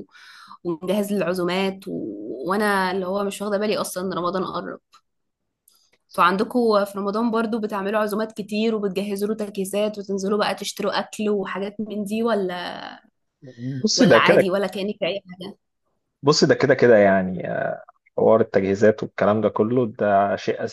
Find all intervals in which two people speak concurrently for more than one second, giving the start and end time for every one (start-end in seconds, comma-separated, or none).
none